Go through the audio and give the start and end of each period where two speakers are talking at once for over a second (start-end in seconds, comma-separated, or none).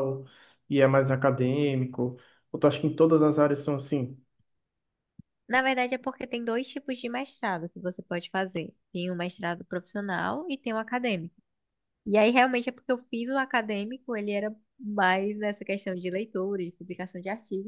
none